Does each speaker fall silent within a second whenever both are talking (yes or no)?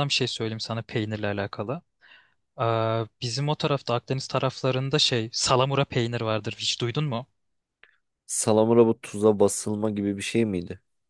yes